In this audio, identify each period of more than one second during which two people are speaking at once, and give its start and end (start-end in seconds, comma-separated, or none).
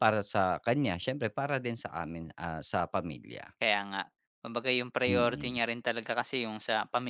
none